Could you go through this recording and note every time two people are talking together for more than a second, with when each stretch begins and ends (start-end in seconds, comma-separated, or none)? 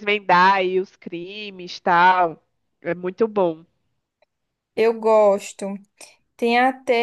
none